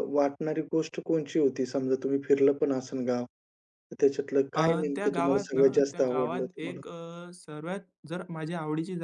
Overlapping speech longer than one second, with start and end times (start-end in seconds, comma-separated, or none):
4.5-6.8